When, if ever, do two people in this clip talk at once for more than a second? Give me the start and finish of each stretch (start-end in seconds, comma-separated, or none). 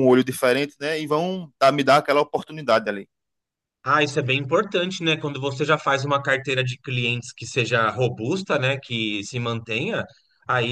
none